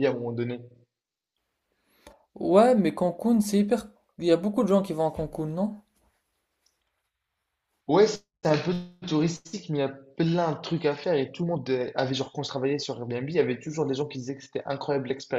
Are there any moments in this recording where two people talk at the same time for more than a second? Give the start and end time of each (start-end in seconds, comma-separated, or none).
none